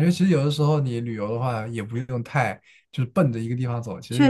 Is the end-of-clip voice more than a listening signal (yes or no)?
no